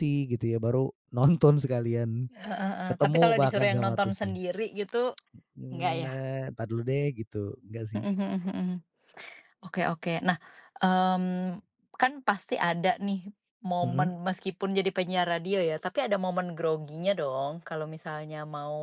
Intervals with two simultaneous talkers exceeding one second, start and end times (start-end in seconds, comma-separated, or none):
2.9-4.4